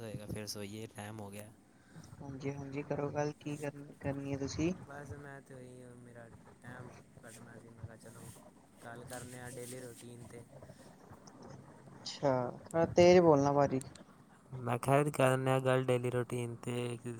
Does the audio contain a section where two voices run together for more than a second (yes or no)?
no